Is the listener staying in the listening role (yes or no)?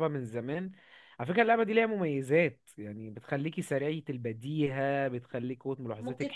no